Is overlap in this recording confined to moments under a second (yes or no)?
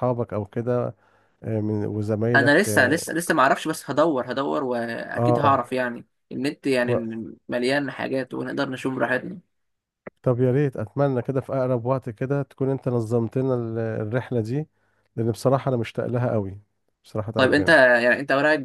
yes